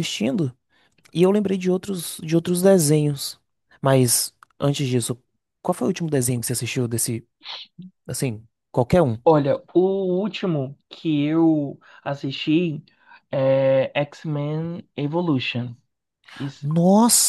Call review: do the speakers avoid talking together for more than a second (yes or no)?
yes